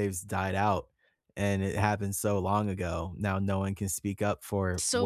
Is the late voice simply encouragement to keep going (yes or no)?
no